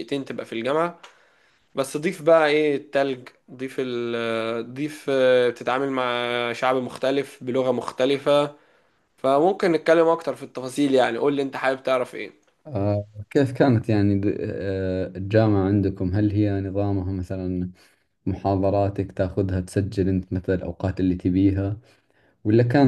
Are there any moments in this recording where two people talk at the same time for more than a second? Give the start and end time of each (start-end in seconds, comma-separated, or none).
none